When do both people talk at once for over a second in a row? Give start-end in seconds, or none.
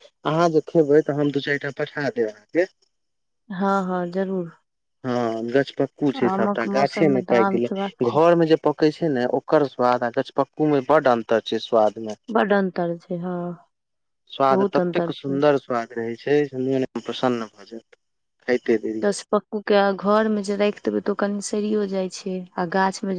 6.3-8.0